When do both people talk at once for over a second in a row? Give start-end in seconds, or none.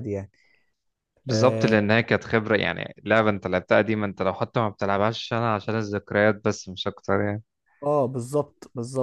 none